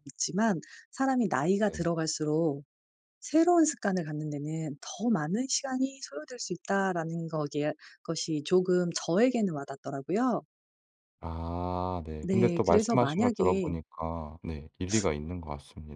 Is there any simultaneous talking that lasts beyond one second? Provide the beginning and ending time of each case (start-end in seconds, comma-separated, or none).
12.2-13.8